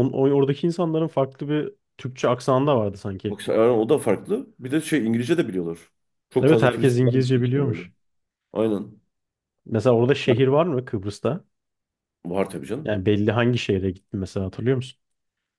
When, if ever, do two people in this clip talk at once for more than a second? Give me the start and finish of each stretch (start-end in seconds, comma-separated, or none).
6.4-7.8